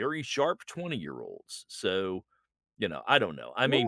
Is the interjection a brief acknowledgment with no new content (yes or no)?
no